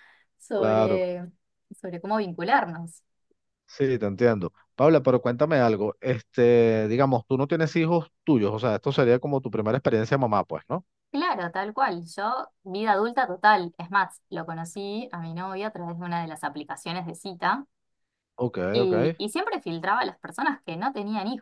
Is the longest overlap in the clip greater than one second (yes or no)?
no